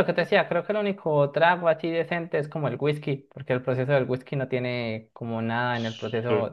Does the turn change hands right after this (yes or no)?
yes